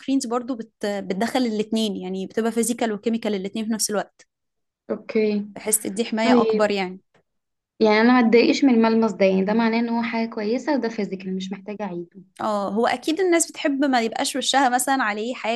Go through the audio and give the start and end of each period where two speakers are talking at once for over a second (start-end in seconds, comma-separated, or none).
none